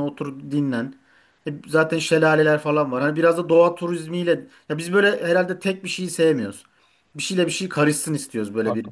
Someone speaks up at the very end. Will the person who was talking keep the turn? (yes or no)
no